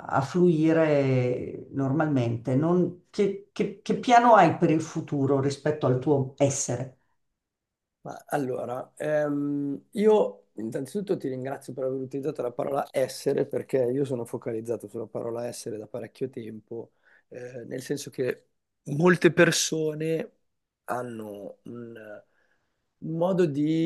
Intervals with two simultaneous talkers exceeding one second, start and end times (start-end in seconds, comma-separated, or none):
none